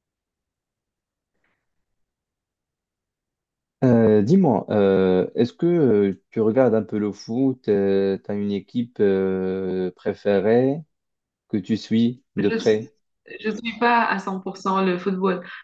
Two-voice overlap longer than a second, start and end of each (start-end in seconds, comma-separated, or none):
none